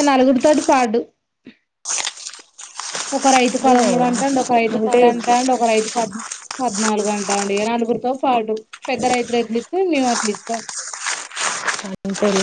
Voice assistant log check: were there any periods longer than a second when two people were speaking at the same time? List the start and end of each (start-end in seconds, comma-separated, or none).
3.6-5.0